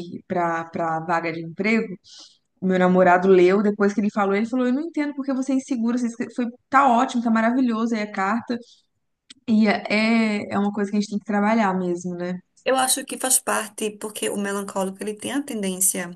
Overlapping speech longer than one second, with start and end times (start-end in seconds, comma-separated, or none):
none